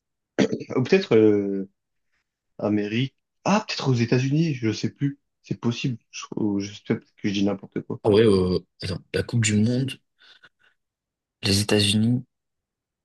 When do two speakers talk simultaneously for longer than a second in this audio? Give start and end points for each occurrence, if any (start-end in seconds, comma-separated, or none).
none